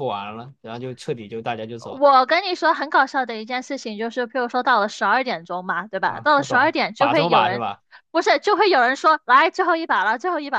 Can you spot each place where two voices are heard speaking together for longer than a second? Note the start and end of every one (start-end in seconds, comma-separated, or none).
6.0-7.6